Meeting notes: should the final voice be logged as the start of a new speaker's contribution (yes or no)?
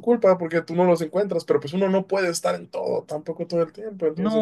yes